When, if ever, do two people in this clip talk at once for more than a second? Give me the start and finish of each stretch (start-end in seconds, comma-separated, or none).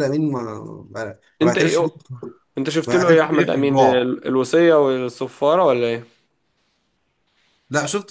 2.9-4.1